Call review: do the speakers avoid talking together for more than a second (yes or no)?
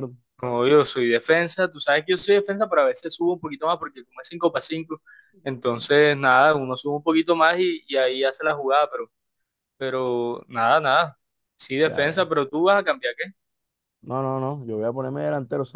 yes